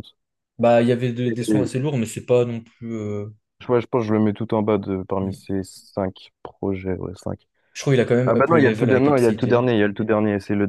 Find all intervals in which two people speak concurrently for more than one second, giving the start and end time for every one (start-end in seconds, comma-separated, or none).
8.2-9.7